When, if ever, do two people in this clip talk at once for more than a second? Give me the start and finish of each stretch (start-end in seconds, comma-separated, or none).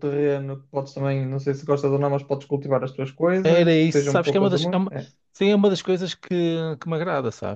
3.4-4.9